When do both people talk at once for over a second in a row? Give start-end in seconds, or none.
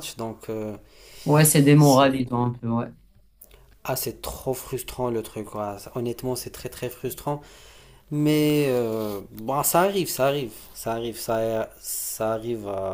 none